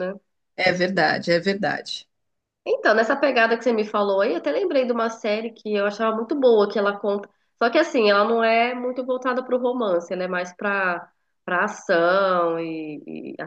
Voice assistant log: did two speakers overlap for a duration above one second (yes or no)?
no